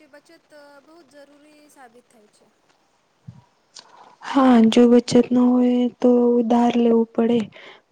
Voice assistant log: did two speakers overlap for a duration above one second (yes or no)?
no